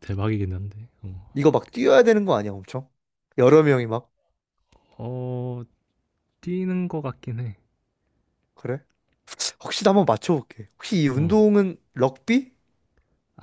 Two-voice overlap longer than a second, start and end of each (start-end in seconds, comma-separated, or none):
none